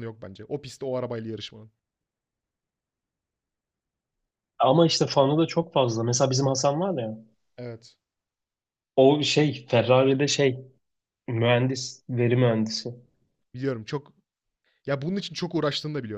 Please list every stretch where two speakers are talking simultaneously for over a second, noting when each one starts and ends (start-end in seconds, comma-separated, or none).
none